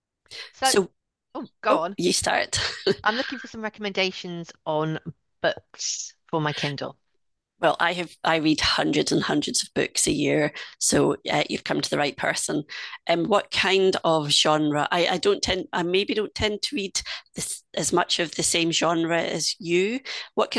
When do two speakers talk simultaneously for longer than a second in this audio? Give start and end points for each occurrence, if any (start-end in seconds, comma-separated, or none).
none